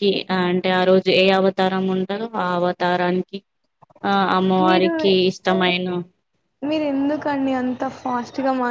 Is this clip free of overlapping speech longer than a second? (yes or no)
yes